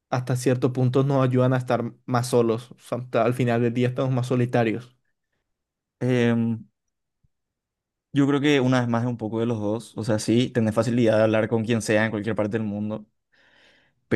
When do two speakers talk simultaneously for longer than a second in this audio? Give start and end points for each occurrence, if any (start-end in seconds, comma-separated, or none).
none